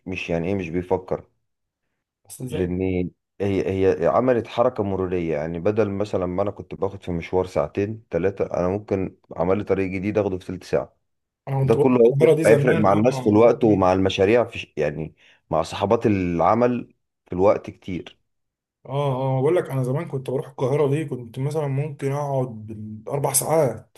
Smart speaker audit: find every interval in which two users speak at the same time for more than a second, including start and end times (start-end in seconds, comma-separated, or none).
11.6-13.9